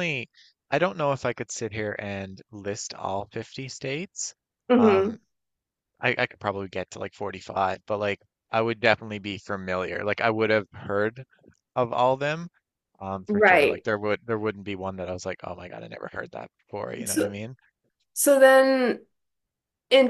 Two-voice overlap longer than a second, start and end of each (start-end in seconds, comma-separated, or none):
none